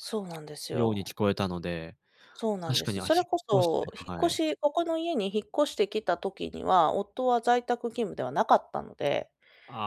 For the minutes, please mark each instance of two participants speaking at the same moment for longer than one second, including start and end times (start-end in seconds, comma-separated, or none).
2.7-4.4